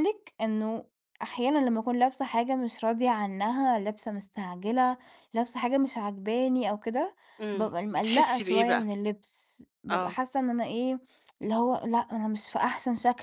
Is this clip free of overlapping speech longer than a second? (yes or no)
no